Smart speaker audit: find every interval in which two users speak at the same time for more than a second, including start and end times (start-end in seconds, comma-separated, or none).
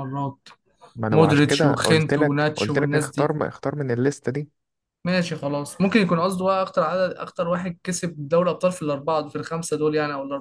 1.1-3.3